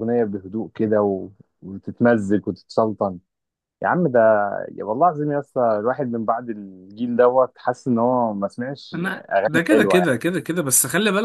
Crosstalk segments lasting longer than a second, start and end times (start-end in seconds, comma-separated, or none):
none